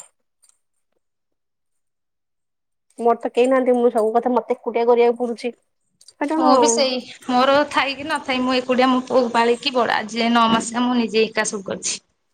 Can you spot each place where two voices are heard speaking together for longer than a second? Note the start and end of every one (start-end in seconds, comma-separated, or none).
none